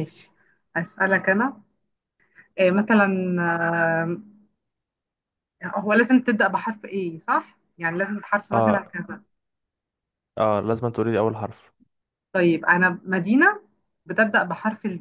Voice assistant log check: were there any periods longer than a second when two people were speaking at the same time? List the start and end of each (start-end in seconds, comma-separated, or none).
none